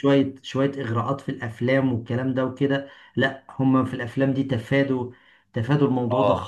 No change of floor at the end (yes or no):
no